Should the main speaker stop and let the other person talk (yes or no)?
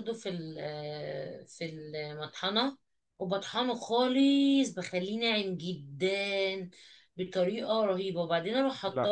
no